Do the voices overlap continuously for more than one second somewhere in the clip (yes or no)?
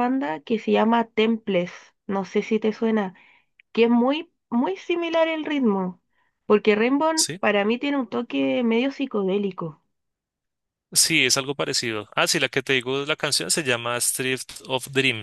no